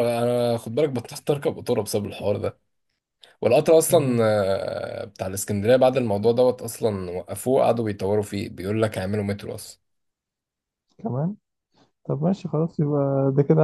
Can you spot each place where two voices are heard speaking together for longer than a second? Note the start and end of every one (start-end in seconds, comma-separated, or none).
none